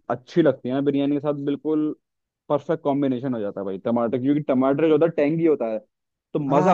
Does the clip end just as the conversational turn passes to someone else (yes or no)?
yes